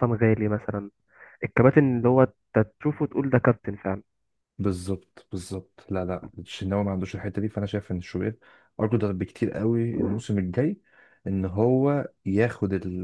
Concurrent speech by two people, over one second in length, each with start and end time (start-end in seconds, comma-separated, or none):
none